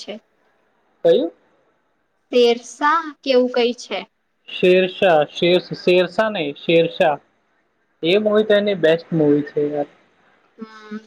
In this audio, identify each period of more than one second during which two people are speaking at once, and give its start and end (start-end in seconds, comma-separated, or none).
none